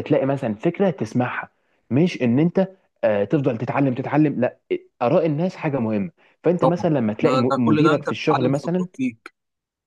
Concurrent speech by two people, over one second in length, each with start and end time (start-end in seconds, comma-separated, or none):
6.6-8.9